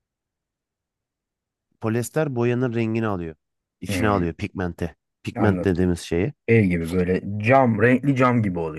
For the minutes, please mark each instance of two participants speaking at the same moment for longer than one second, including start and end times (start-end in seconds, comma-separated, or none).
none